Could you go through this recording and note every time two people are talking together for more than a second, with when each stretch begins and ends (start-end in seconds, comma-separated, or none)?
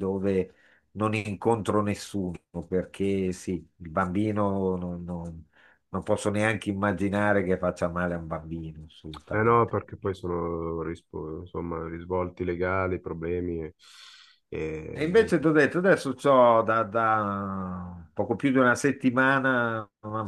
none